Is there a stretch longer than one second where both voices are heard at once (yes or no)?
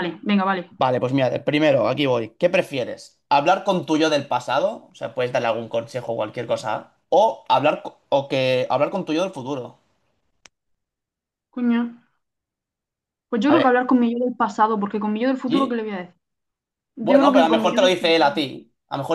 yes